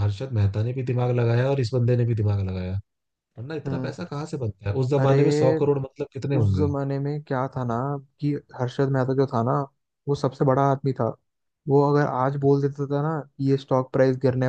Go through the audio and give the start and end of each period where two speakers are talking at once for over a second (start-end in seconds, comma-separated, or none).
none